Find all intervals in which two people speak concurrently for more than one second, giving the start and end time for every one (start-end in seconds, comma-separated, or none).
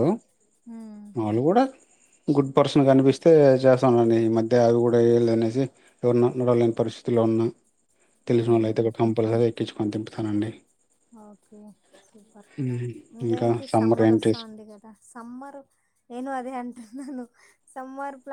none